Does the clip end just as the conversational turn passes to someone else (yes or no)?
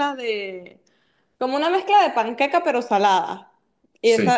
no